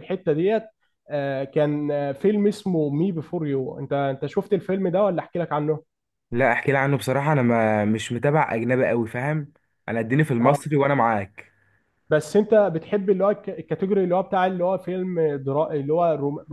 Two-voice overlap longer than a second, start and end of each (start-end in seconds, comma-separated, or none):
none